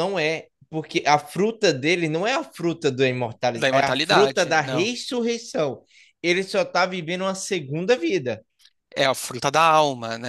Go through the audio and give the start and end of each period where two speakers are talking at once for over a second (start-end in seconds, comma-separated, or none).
3.6-4.9